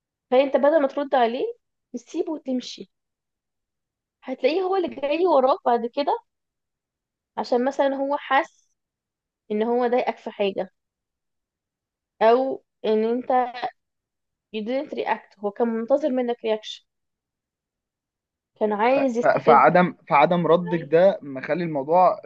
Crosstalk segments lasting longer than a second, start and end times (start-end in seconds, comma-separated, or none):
none